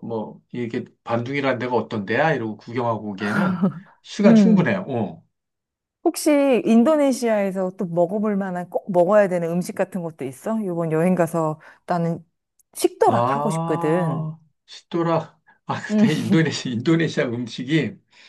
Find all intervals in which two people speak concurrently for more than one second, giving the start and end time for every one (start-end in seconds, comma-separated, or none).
13.1-14.3